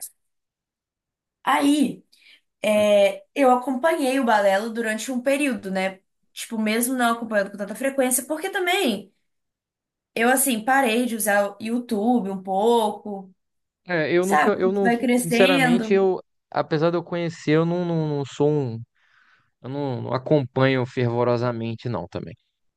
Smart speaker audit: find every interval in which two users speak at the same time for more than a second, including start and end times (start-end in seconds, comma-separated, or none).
14.2-16.0